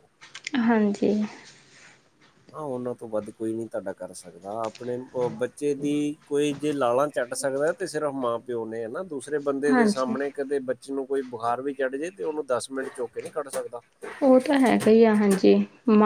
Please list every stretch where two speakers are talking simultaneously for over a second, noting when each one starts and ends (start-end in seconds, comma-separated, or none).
none